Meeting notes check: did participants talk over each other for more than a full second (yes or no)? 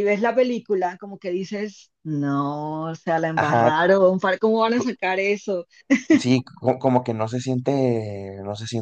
no